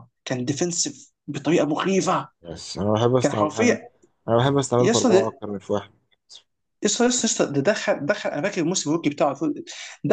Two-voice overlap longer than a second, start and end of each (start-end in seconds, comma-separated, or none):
none